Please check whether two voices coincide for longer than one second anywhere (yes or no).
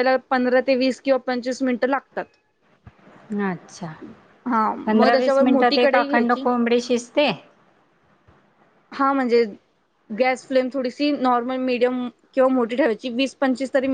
yes